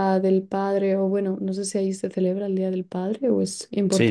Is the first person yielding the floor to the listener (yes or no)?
yes